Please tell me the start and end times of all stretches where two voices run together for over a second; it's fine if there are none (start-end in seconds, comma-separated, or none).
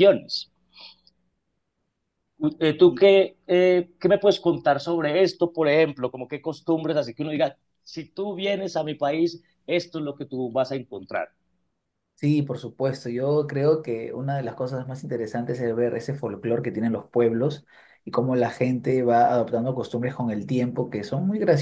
none